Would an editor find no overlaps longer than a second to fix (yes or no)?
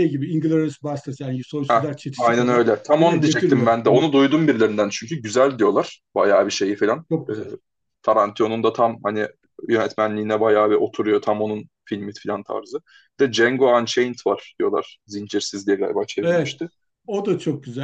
no